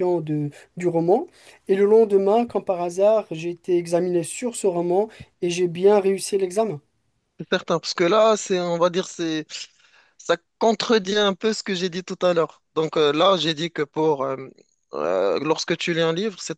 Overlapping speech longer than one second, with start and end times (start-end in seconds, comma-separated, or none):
none